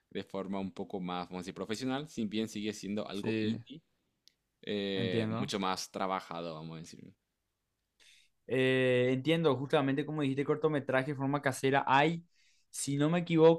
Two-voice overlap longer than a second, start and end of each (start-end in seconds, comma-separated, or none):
none